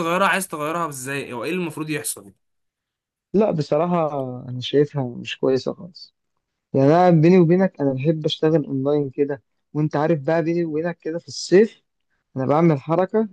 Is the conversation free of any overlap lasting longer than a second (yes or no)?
yes